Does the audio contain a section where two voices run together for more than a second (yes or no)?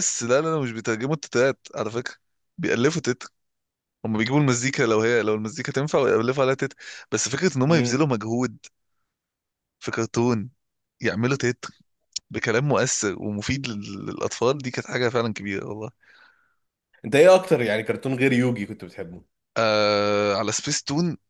no